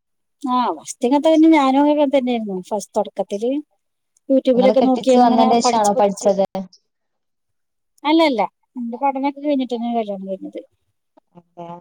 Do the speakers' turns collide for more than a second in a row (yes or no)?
yes